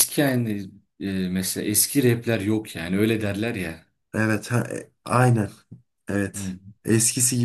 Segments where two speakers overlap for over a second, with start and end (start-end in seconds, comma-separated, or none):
none